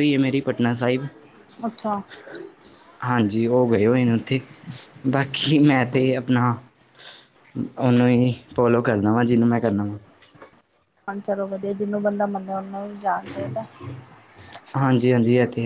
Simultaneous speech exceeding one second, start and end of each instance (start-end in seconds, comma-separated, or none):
none